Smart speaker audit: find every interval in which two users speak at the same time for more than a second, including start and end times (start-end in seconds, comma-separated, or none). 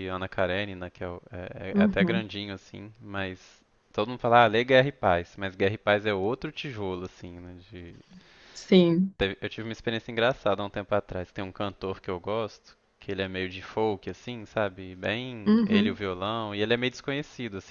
none